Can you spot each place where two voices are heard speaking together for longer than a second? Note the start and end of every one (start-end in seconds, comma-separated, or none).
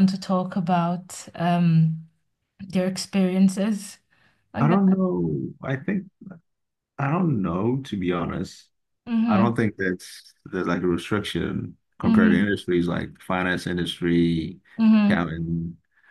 none